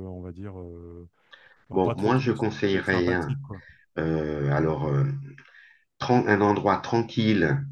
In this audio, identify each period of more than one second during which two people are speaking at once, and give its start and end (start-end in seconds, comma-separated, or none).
1.7-3.4